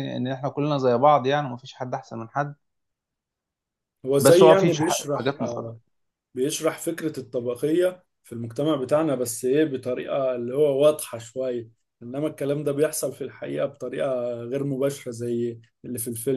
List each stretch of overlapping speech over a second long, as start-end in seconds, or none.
4.2-5.7